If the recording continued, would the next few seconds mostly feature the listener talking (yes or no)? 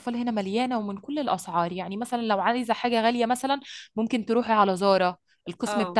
no